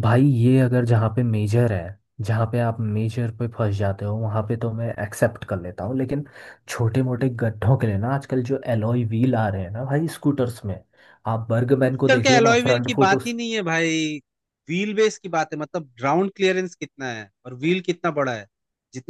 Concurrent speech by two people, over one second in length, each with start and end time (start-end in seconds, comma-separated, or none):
11.9-13.4